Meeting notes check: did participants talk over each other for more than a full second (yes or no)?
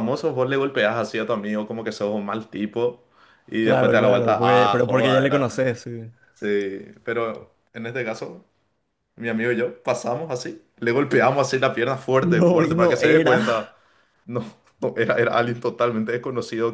yes